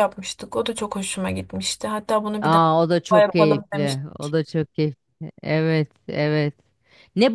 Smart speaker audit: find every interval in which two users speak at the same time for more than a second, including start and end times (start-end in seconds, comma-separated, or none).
2.4-4.3